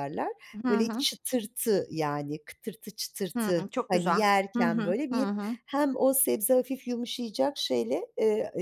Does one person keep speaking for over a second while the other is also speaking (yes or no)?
yes